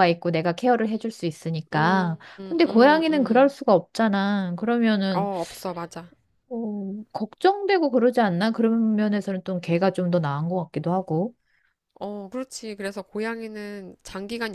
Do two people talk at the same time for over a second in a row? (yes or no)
yes